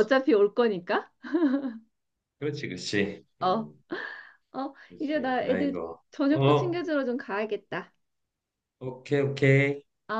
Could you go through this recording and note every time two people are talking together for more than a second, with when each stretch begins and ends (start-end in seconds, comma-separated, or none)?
4.9-6.8